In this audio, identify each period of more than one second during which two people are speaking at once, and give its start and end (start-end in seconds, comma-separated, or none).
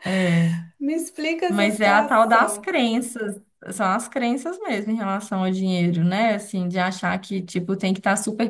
1.5-2.7